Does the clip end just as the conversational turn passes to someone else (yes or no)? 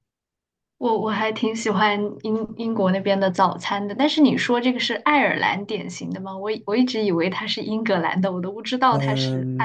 yes